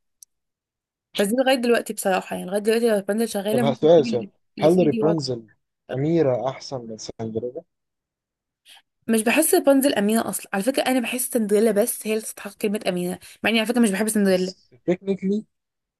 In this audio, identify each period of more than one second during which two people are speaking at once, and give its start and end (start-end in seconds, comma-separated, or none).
3.5-5.2